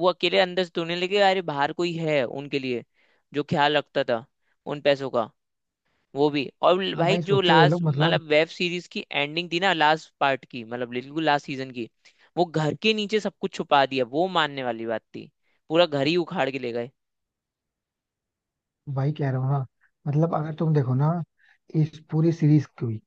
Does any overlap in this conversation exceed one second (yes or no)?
yes